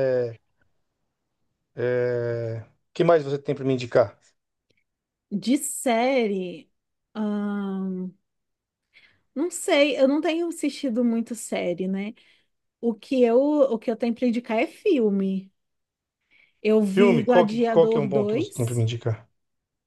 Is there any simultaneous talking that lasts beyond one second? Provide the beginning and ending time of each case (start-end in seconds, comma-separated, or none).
16.8-18.9